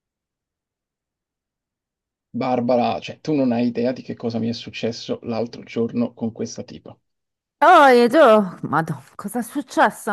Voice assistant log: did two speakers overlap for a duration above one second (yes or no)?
no